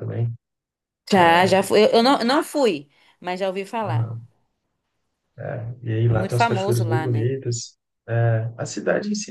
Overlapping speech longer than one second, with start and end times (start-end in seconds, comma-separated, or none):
6.0-7.3